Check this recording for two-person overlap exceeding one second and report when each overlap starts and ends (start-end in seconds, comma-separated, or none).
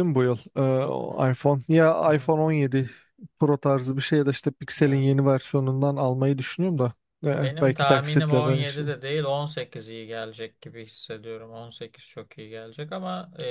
7.4-8.9